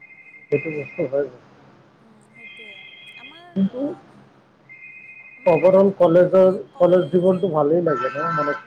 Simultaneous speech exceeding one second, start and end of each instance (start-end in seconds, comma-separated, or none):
5.5-7.4